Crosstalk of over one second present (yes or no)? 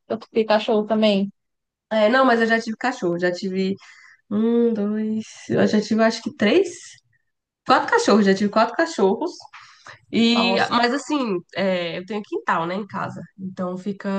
no